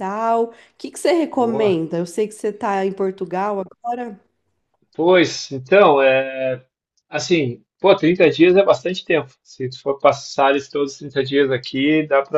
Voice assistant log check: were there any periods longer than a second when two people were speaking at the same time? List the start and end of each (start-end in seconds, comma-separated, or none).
none